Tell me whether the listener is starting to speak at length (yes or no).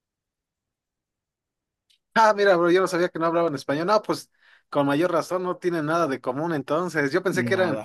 no